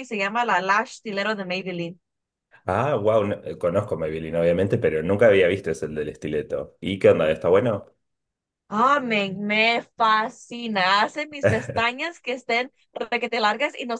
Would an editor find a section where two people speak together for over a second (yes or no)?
no